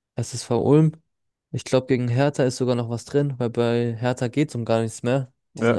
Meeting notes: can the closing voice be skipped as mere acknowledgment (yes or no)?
yes